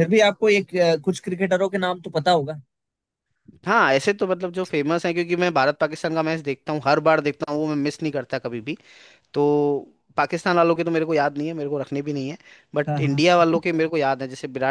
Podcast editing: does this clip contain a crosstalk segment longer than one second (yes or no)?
no